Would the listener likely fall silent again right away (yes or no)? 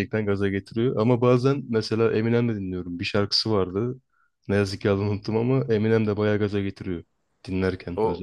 no